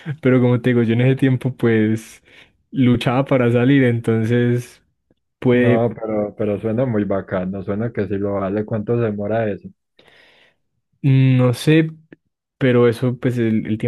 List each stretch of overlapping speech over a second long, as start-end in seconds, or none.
none